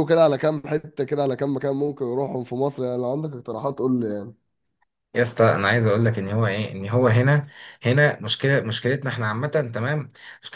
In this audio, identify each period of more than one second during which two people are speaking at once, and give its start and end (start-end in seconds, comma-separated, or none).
none